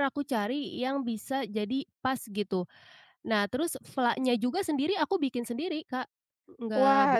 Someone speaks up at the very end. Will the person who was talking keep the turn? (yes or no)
no